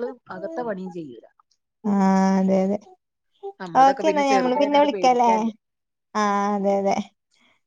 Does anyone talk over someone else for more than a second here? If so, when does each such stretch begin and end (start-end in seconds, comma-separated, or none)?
3.8-5.3